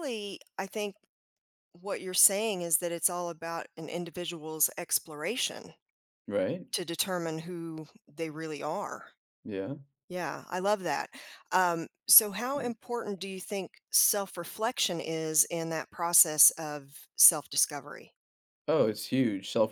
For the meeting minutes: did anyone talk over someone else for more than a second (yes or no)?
no